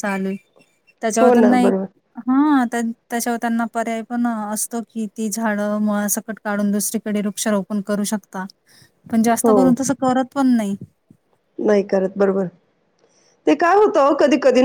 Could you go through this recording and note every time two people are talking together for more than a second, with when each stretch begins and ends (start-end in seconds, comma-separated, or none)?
none